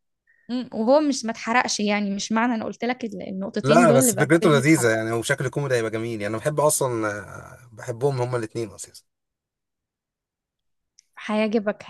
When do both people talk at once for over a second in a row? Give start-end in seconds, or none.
3.6-4.9